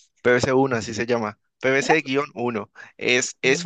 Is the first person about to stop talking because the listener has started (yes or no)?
no